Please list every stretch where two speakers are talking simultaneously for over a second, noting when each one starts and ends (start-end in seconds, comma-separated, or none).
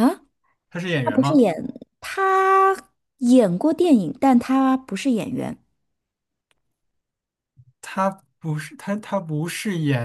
none